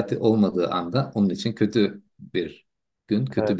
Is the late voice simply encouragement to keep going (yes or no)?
yes